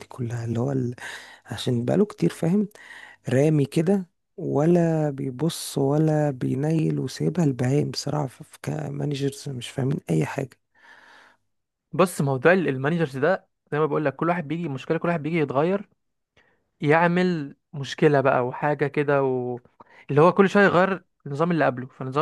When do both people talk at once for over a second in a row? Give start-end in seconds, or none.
none